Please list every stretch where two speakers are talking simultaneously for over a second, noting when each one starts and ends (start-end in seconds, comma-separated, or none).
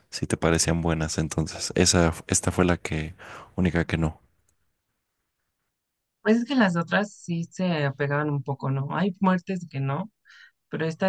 none